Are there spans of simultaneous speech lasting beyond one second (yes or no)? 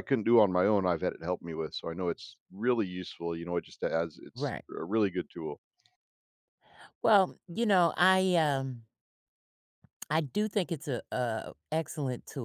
no